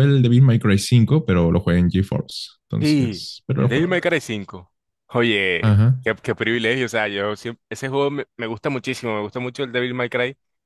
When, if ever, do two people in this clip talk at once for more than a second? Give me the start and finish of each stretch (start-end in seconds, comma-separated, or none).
2.8-4.2